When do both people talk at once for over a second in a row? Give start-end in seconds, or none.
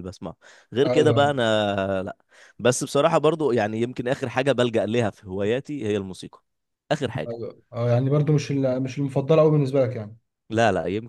none